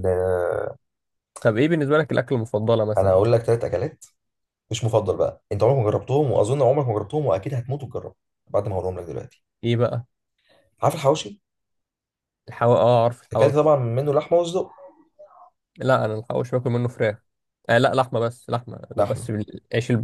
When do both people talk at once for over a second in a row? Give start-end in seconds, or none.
none